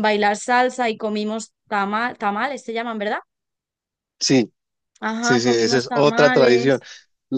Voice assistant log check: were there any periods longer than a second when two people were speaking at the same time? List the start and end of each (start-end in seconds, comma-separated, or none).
5.2-6.8